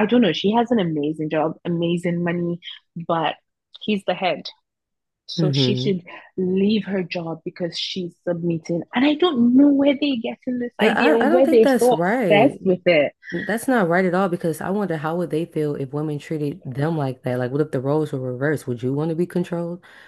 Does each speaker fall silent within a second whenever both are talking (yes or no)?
no